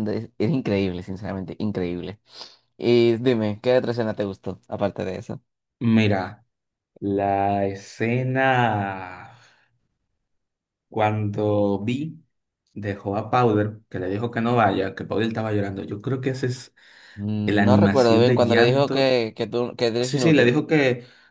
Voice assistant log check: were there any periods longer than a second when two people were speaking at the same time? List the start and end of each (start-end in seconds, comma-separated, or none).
17.4-19.1